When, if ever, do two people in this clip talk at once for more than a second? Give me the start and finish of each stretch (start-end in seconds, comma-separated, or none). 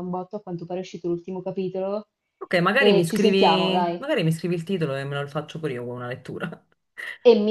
2.8-4.1